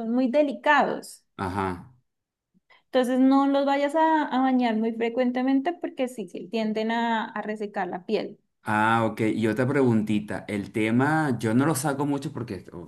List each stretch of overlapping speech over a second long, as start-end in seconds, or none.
none